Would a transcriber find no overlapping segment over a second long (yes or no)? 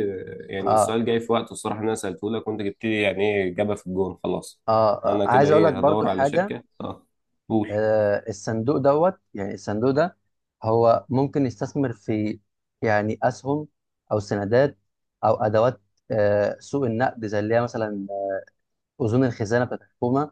no